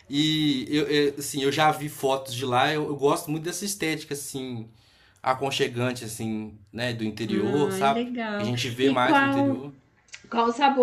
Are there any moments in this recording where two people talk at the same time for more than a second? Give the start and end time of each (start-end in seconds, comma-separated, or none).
7.3-9.6